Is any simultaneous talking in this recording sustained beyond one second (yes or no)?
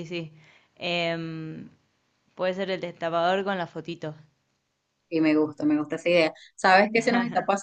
no